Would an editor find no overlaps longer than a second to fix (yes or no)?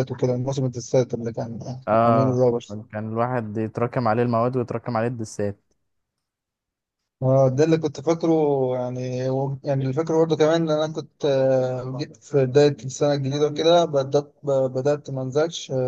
yes